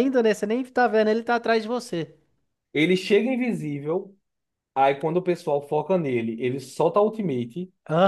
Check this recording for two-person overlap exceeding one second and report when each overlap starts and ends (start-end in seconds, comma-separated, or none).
none